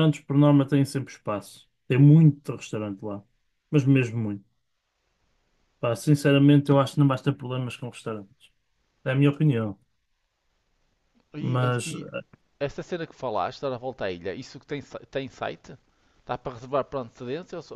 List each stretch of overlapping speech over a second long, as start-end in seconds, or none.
none